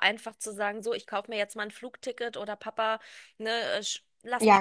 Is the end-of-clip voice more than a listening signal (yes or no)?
yes